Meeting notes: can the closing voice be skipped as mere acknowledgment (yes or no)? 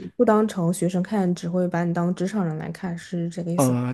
no